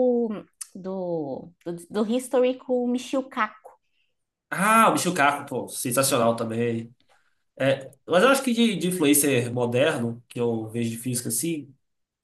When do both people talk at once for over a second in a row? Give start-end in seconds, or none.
none